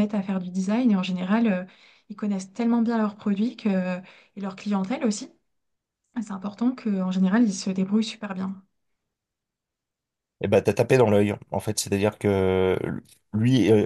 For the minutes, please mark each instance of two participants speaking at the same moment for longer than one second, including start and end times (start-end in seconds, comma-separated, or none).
none